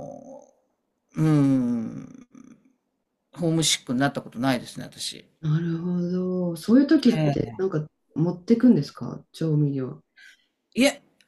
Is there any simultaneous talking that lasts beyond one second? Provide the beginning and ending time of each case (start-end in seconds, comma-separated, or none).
none